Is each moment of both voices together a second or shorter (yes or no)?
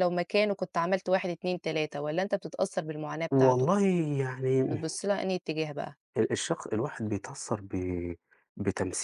yes